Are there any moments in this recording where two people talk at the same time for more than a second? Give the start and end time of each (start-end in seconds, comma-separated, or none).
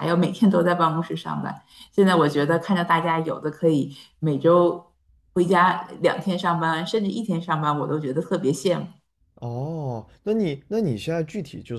none